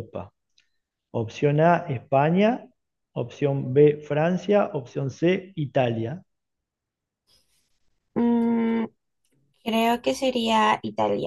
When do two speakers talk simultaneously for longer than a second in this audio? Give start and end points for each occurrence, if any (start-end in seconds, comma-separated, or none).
none